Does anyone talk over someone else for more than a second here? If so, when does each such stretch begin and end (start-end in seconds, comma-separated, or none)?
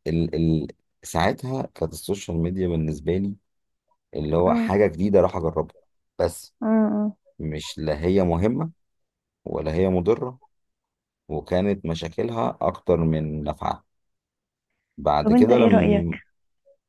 none